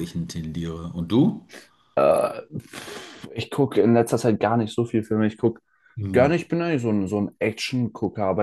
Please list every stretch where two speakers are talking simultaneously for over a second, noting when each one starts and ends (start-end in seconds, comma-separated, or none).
none